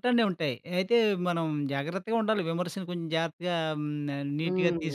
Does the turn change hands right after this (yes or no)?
yes